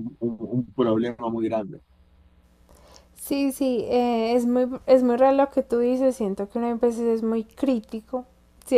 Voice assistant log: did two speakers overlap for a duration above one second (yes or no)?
no